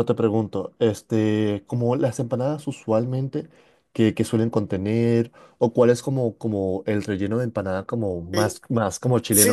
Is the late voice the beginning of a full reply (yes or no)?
yes